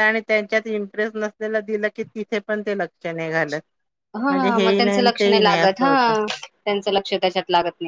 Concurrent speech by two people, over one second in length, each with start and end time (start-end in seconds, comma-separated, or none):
4.3-5.9